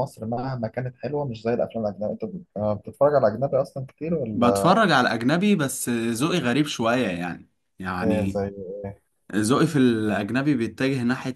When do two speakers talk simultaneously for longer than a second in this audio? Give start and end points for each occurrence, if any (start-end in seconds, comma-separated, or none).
none